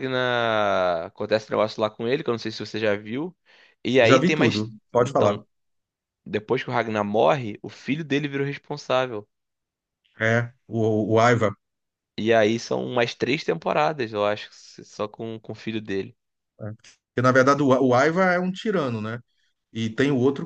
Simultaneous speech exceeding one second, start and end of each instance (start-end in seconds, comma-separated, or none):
4.0-5.4